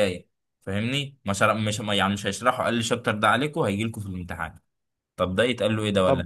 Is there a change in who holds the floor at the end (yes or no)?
yes